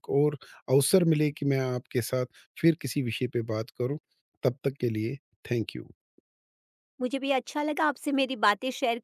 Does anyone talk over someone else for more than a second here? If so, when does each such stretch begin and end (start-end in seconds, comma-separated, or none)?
none